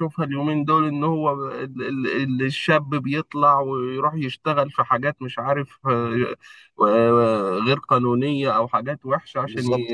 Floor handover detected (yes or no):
no